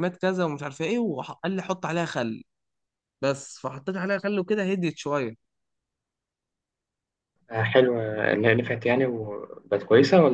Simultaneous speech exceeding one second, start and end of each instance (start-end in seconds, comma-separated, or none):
none